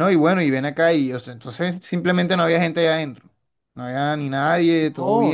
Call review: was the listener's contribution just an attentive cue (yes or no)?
no